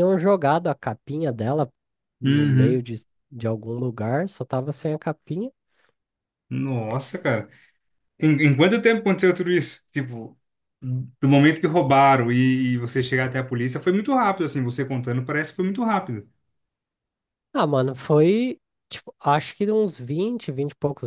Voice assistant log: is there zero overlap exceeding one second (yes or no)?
yes